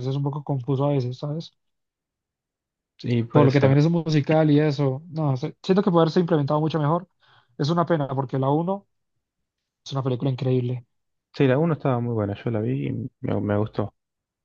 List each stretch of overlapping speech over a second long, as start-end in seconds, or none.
none